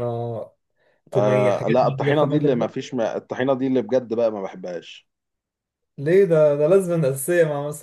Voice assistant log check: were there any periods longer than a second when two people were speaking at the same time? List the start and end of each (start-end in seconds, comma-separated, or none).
1.1-2.9